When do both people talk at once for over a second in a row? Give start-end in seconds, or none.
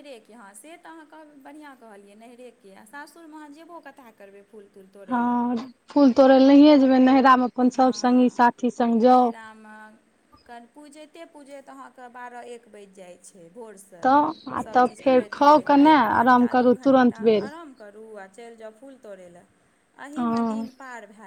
14.6-17.5